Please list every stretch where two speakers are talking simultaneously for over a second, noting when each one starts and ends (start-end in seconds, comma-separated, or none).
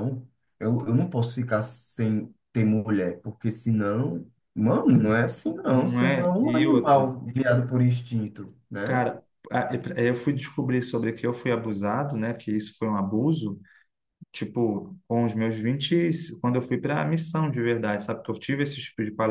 5.7-7.1